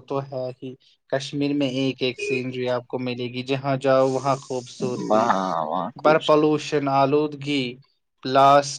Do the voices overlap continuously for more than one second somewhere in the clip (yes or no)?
no